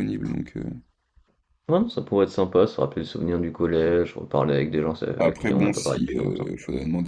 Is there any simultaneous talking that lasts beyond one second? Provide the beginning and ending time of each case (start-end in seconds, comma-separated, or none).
5.2-6.5